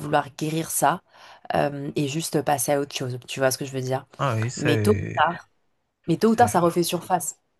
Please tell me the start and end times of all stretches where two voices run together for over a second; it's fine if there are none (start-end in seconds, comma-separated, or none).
none